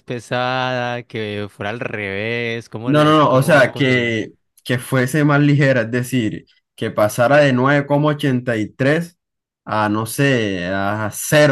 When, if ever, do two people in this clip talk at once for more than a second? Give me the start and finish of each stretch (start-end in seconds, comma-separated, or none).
2.8-4.2